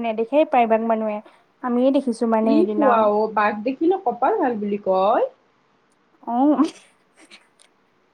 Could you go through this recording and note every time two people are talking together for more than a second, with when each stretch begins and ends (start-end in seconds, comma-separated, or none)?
none